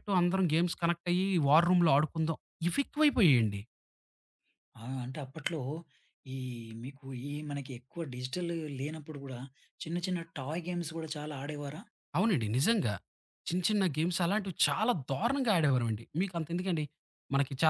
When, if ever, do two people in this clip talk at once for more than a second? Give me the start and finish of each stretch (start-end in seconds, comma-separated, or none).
none